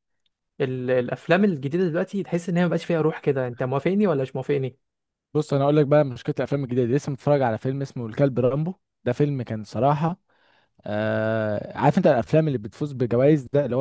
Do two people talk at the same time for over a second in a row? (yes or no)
no